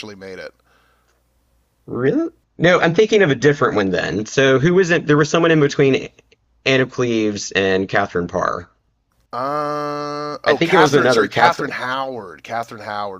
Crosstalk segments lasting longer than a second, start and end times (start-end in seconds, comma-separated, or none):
10.5-11.8